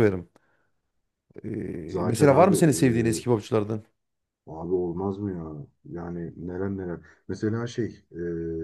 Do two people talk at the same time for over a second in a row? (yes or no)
yes